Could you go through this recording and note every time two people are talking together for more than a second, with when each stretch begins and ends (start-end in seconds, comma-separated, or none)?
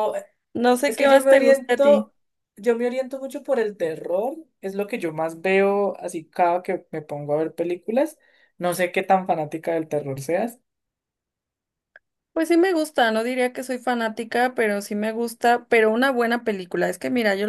0.9-2.1